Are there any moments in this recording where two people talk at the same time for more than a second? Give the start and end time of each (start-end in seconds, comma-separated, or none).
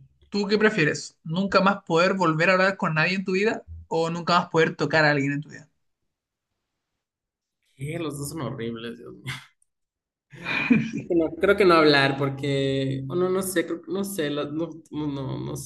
none